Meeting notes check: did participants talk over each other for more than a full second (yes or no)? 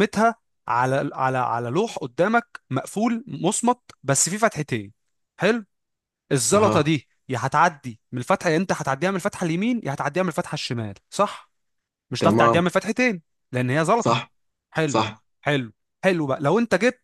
no